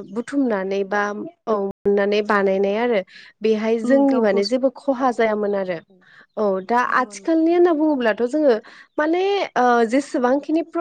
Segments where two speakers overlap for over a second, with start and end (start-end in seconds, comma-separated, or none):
4.1-5.8